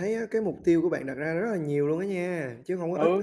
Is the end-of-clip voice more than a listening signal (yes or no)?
yes